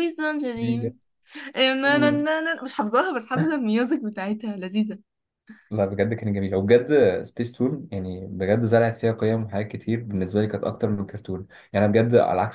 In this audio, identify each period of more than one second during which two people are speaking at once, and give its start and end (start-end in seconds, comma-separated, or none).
none